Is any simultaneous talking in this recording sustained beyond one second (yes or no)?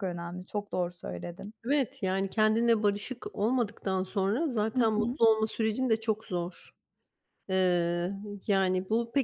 no